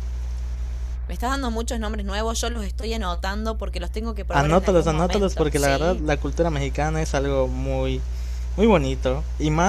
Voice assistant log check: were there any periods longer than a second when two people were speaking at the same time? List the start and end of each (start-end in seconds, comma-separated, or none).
4.3-6.0